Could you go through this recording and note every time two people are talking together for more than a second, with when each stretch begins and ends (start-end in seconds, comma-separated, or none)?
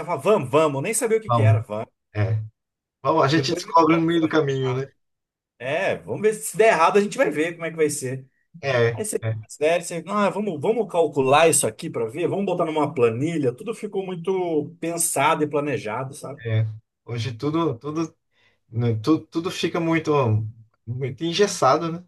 3.3-4.9